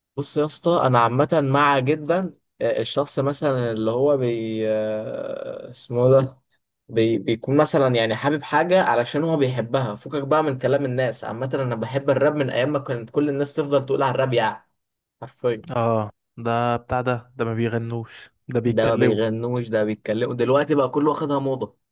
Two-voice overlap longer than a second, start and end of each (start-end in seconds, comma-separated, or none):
none